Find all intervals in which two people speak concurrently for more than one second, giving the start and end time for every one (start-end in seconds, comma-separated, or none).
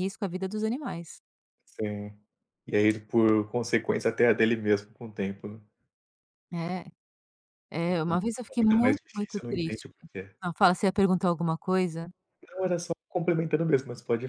7.9-9.8